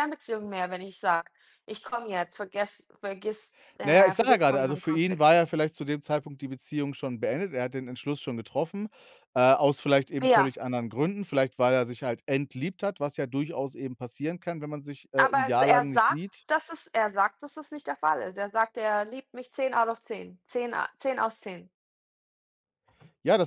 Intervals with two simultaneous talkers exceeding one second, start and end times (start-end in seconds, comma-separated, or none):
3.8-5.3, 15.2-16.4